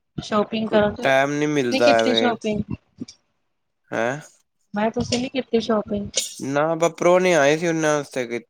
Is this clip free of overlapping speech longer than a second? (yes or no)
no